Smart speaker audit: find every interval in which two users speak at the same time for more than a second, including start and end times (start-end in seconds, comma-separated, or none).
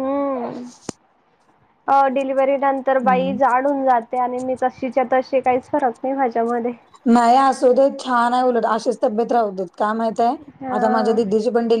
none